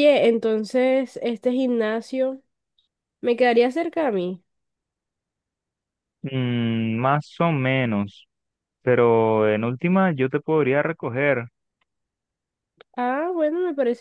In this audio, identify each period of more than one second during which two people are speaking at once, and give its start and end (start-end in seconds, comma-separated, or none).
none